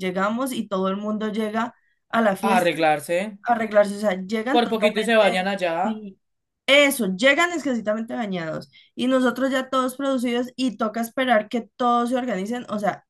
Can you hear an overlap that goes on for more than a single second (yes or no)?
yes